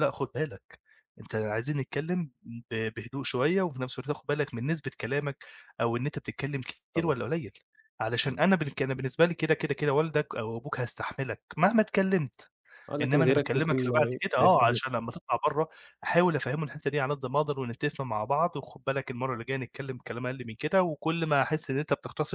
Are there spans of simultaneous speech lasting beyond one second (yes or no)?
yes